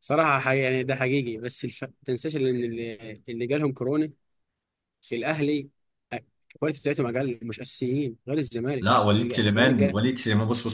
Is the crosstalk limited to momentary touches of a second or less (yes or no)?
no